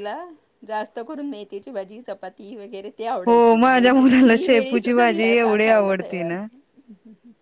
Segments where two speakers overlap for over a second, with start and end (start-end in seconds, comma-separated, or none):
3.3-6.3